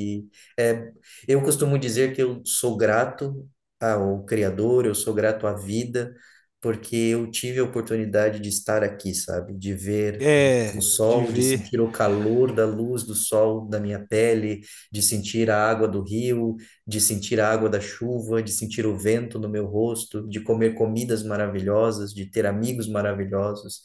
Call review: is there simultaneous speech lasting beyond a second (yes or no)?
yes